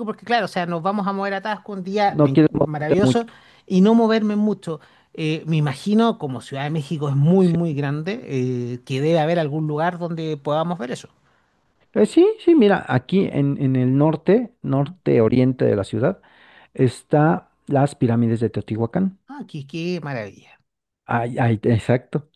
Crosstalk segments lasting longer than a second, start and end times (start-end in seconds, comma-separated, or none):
2.1-3.3